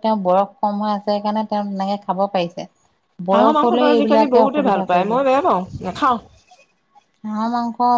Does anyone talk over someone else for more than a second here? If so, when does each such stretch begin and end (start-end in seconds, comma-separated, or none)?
3.3-5.1